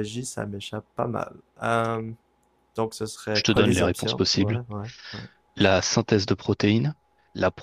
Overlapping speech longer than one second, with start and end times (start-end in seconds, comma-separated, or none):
3.3-4.6